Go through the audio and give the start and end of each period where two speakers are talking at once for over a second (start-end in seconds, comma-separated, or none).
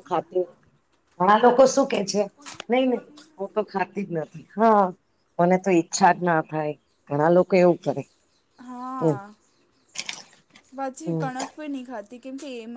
none